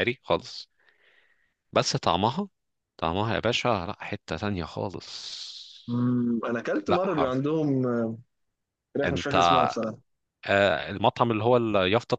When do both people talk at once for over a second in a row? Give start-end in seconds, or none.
none